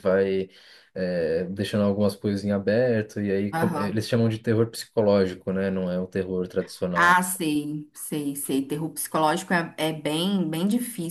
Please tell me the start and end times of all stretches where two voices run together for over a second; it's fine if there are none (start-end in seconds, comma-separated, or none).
none